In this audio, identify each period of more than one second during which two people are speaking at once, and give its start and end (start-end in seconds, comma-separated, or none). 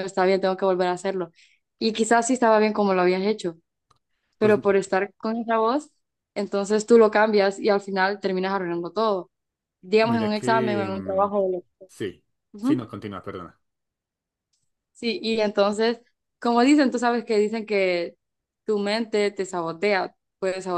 10.0-11.3